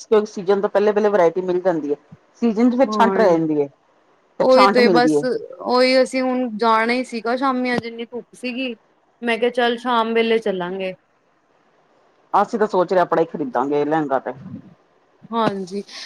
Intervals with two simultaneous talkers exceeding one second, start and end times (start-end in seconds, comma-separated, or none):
none